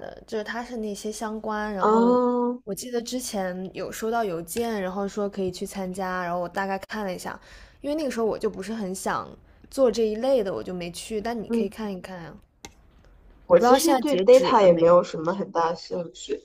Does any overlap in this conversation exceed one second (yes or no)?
yes